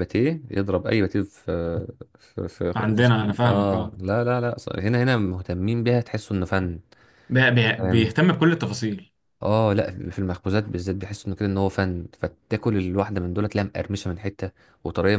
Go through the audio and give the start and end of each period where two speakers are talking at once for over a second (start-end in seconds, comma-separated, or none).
2.8-4.0